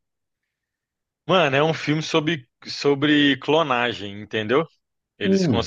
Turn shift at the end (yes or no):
no